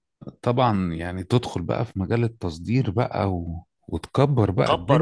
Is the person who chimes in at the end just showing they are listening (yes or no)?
no